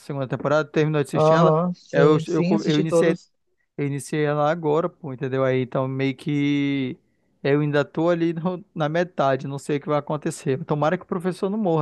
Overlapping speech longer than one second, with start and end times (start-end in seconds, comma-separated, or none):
1.1-3.1